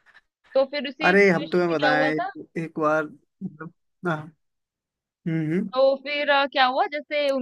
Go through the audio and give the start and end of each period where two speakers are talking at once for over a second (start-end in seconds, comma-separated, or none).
1.0-2.3